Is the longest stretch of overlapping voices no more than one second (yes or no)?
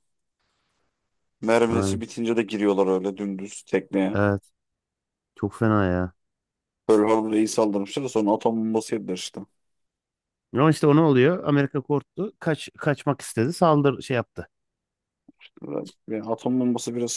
yes